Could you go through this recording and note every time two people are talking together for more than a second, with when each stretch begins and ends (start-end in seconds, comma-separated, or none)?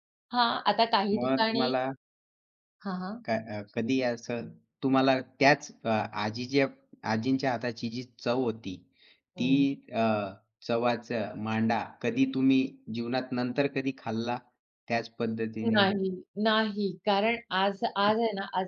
none